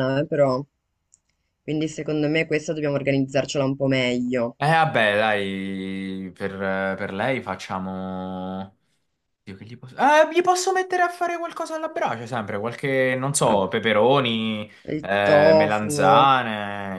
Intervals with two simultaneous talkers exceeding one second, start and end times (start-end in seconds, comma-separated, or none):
14.9-16.3